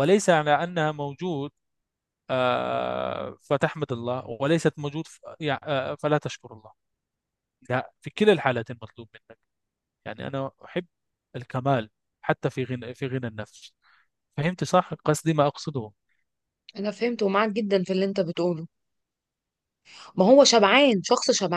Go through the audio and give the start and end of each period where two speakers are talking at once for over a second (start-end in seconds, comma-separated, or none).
none